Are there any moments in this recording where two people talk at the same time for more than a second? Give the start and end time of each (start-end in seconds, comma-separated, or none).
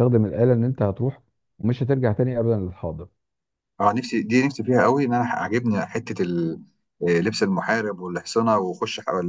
none